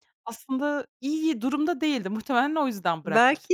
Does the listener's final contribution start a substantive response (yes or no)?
yes